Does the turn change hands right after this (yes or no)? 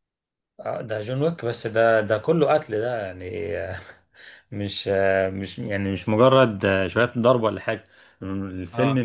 no